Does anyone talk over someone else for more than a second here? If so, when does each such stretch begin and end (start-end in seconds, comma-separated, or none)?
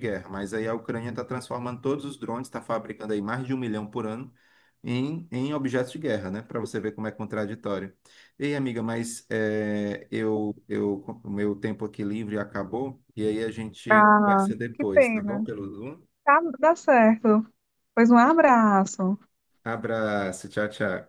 13.9-15.4